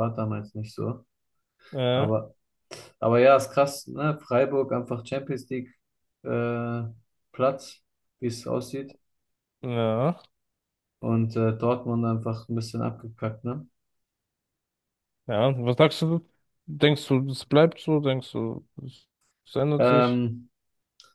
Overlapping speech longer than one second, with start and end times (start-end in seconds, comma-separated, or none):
none